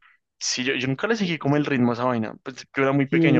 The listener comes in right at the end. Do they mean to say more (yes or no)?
yes